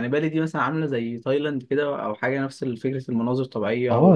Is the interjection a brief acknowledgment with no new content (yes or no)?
no